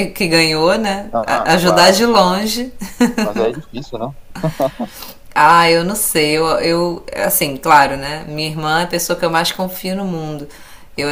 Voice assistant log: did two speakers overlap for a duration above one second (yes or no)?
yes